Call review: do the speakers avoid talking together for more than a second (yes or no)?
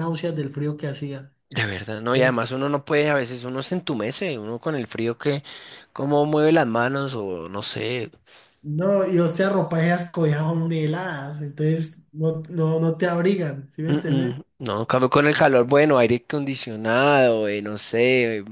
yes